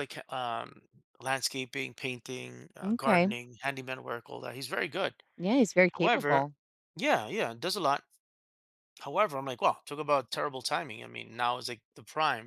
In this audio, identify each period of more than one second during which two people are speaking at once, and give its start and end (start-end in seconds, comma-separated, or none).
none